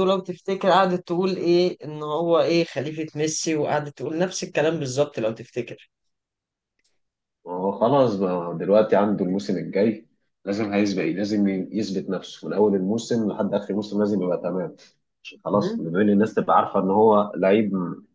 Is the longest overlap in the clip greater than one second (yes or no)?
no